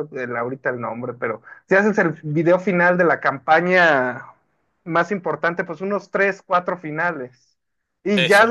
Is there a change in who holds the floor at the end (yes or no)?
no